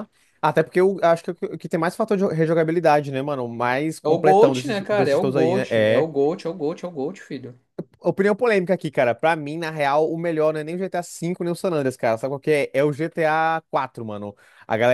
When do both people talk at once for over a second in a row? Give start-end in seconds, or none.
4.0-6.1